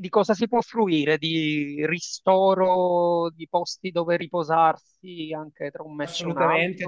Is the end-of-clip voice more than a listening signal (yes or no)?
yes